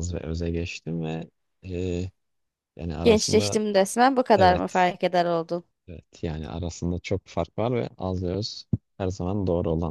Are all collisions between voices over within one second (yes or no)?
yes